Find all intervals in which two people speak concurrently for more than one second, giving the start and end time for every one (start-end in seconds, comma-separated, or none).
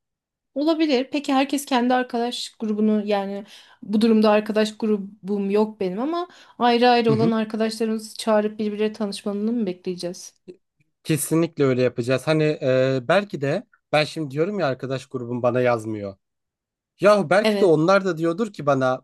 none